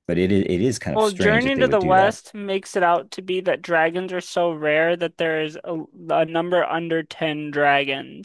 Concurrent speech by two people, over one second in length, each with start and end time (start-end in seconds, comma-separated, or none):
0.9-2.2